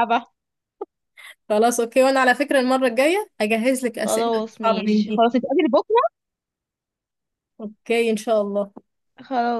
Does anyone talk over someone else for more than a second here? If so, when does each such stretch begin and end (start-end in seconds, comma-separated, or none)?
4.0-5.2